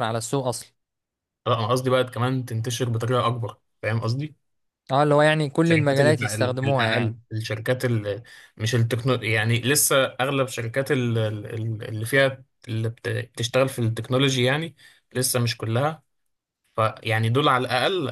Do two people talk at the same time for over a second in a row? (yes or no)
yes